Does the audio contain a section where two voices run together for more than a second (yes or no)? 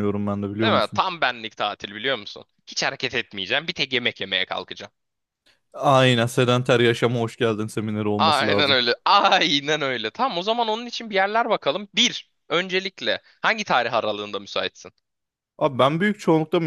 no